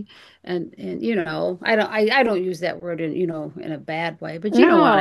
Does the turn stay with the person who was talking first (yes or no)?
no